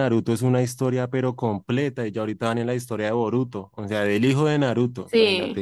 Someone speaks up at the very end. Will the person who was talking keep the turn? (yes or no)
yes